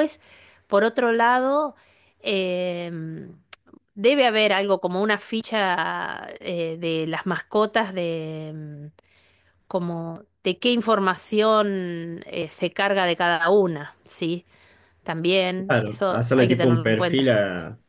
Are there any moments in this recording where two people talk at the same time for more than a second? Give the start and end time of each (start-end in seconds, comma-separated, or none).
15.7-17.3